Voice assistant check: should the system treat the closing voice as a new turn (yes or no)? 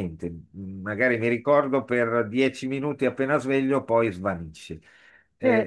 yes